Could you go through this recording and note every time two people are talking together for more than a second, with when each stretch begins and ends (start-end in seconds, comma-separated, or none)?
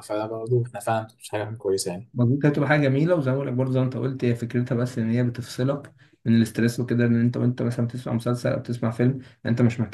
none